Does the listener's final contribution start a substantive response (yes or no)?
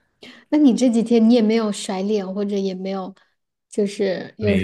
yes